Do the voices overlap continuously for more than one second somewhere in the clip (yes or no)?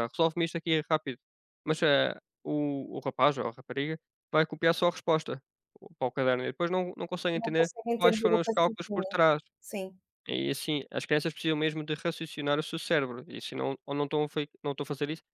yes